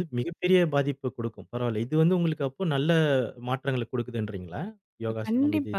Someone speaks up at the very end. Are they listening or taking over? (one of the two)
taking over